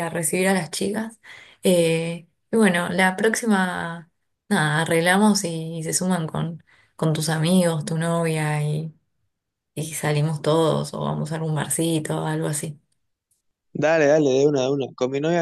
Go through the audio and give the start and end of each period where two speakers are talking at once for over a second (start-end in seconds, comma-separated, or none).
none